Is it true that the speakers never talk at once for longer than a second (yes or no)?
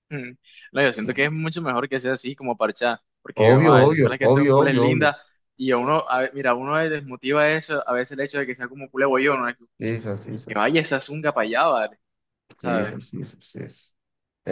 no